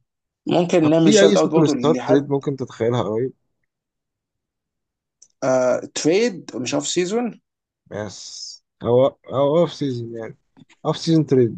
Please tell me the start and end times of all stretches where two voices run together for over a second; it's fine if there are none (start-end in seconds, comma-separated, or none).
0.8-2.3